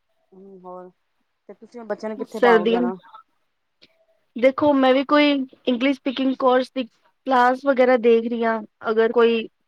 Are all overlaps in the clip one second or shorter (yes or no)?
yes